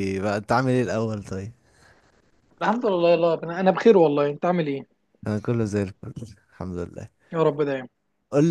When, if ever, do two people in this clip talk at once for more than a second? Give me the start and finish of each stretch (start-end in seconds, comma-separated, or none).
none